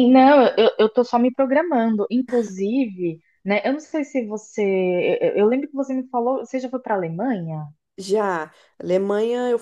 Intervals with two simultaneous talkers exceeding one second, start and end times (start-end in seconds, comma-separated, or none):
none